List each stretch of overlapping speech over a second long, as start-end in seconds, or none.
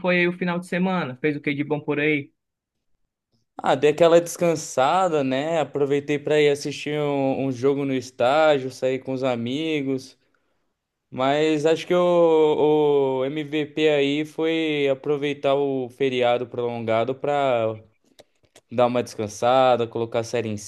none